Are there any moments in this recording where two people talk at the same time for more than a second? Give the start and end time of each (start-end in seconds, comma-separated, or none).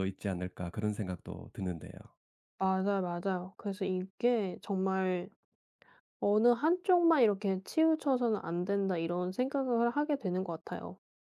none